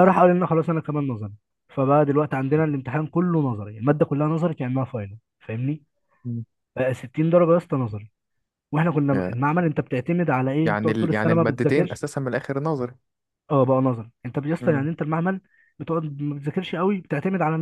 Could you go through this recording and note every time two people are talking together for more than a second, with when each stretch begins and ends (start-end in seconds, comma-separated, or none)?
10.6-12.0